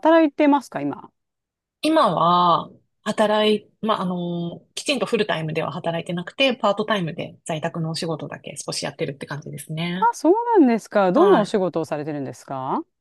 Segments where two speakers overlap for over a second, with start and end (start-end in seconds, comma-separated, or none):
none